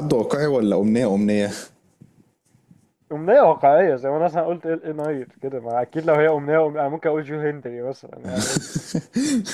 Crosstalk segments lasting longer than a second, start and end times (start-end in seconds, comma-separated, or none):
none